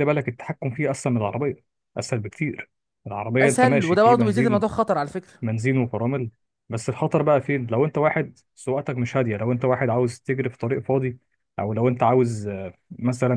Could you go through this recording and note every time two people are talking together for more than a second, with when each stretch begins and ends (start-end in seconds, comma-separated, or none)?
3.4-4.6